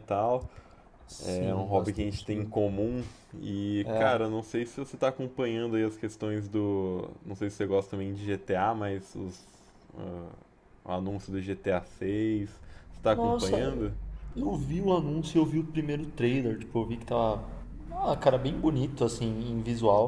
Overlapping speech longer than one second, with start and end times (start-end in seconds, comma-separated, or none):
1.2-2.5